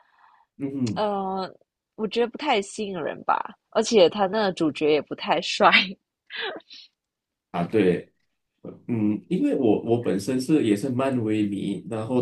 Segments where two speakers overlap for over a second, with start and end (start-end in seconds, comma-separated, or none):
none